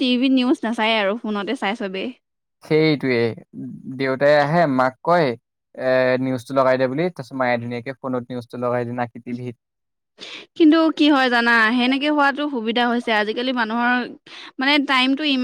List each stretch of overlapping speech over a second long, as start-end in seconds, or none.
none